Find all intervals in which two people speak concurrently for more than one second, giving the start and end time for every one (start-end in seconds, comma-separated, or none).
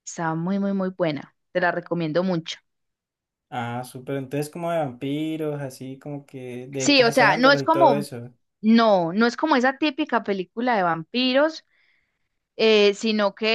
6.8-8.1